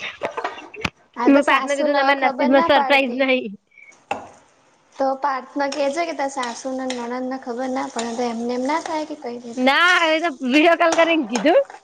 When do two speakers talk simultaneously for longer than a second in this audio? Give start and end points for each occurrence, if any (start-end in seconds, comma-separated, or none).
1.3-3.2